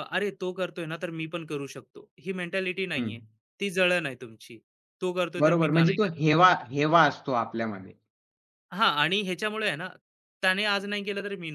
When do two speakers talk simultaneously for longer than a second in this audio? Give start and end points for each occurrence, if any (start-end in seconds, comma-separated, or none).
none